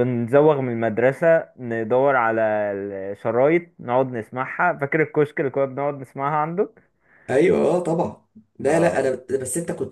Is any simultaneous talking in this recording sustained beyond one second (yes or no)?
no